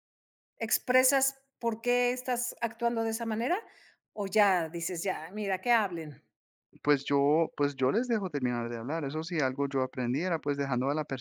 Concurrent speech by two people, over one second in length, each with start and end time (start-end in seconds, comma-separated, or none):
none